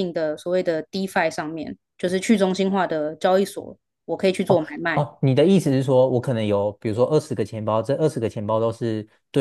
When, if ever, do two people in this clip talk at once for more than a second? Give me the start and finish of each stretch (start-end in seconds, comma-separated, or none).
none